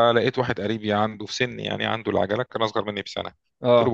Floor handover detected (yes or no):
no